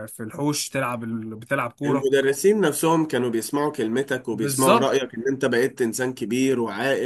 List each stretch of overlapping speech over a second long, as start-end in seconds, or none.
none